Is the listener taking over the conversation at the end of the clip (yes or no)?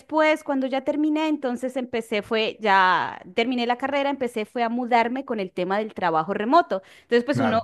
no